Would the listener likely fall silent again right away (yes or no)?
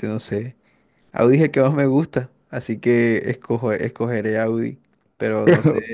yes